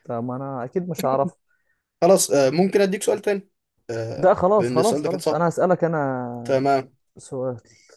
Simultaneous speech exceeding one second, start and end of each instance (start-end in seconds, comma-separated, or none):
4.2-5.5